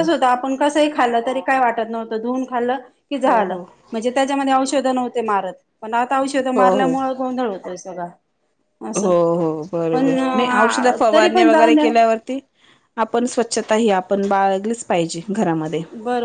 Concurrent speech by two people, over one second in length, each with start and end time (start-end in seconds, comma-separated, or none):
9.9-11.9